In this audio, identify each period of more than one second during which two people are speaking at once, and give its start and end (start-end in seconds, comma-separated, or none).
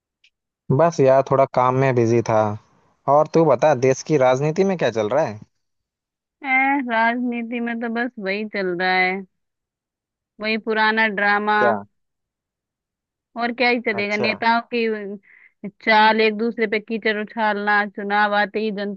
none